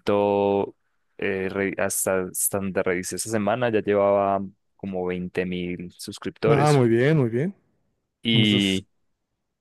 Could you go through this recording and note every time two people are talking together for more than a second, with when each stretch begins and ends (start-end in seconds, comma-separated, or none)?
none